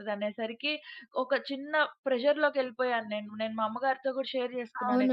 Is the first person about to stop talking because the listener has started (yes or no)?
yes